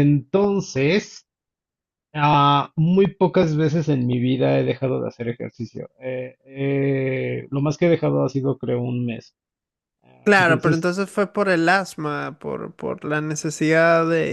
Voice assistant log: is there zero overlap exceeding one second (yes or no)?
yes